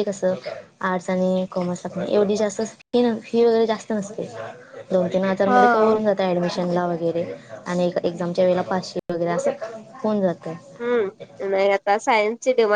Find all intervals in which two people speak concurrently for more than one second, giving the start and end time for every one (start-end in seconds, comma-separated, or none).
none